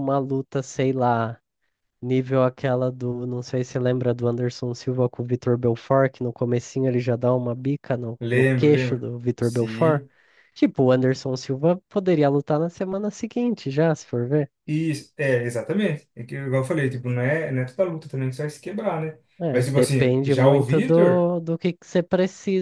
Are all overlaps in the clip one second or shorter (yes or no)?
no